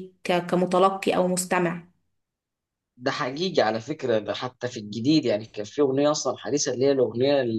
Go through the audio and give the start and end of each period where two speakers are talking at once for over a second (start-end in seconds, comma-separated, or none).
none